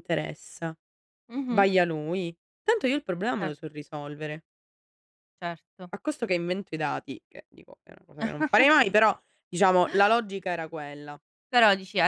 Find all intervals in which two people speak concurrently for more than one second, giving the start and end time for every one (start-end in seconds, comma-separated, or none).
none